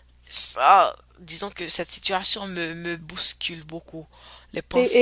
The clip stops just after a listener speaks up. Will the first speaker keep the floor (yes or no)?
no